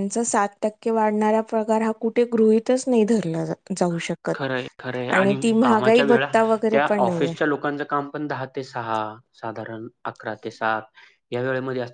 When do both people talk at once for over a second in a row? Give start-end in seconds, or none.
none